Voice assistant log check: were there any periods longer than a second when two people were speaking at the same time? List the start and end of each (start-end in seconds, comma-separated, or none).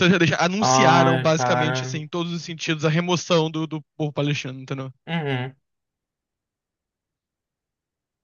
0.6-2.0